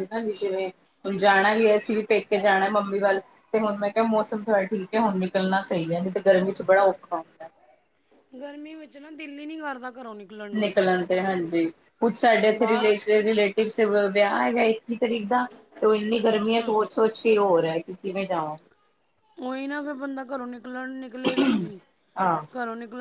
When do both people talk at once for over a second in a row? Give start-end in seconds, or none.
none